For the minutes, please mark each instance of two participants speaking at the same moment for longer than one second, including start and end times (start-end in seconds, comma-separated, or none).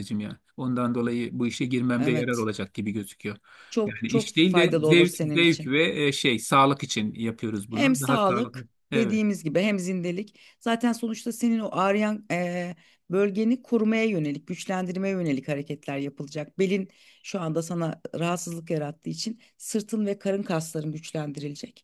3.9-5.8, 7.7-9.2